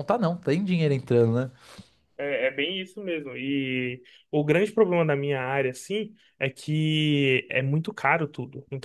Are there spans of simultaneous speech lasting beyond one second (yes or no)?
no